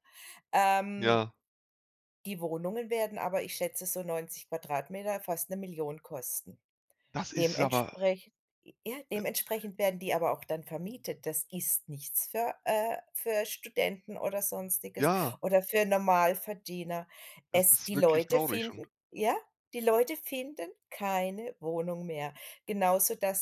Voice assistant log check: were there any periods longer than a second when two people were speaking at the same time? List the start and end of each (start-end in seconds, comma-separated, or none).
17.5-18.9